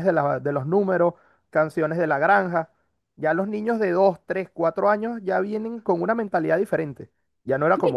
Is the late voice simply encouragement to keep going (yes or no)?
no